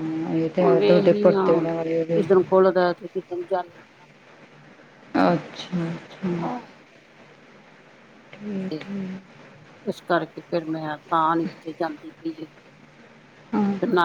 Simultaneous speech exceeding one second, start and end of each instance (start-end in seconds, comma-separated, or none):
0.8-2.2